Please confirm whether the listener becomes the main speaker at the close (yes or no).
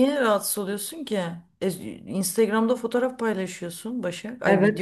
yes